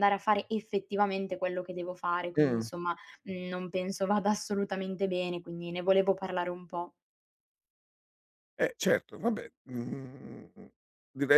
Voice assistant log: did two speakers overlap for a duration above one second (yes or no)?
no